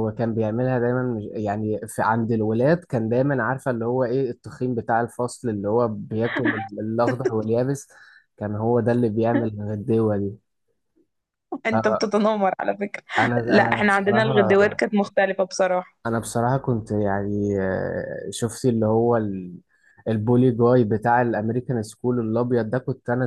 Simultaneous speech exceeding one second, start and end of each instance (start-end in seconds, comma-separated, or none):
13.2-14.7